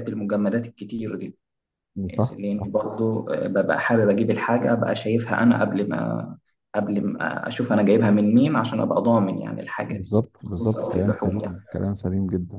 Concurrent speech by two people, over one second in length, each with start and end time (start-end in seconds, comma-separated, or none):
9.9-11.5